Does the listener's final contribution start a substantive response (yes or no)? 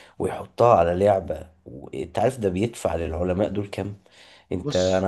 no